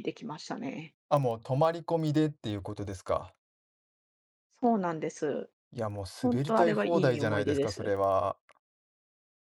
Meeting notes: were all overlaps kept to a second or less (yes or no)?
no